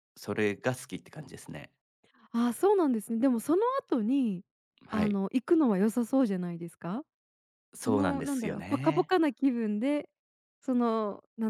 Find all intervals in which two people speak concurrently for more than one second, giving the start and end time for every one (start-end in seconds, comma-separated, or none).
7.8-9.1